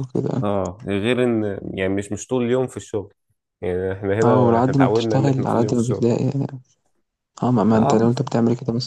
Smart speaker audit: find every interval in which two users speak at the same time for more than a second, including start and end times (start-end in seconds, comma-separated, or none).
4.2-6.1